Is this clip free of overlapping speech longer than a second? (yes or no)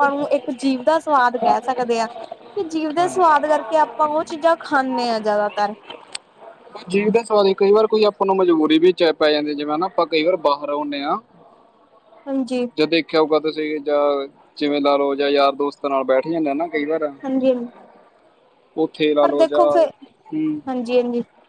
yes